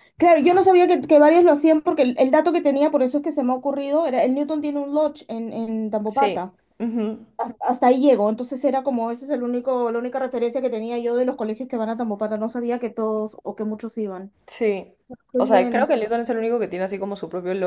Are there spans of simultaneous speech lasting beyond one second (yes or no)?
no